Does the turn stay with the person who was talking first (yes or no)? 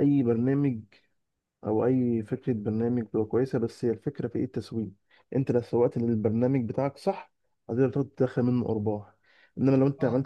yes